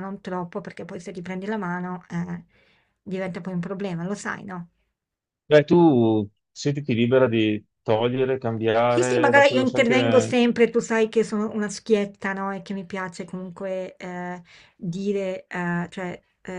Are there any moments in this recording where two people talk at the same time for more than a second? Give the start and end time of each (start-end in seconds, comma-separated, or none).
8.9-10.4